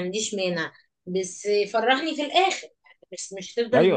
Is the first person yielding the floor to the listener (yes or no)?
yes